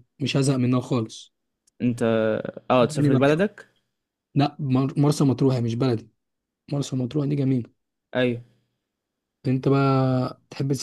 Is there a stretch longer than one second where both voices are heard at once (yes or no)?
no